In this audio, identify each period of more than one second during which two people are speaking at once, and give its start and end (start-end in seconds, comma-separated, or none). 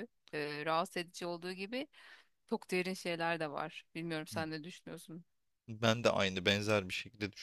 none